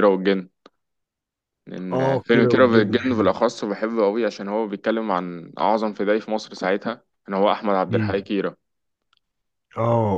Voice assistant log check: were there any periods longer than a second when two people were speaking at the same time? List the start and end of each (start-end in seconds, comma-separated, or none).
1.9-3.3